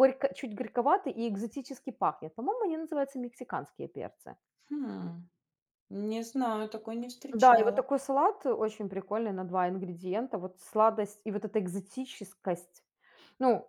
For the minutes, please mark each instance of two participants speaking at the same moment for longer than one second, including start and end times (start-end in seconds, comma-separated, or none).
none